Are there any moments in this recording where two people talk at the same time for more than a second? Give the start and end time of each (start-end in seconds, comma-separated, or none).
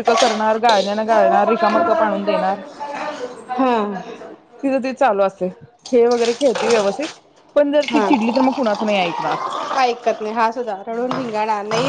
none